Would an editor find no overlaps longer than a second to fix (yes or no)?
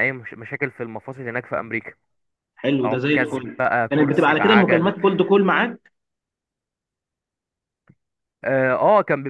no